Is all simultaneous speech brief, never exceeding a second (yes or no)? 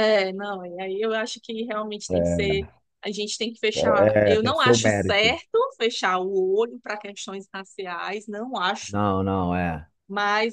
no